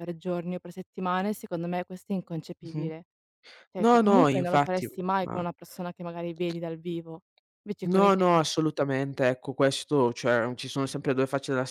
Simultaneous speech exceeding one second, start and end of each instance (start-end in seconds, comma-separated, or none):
3.8-5.4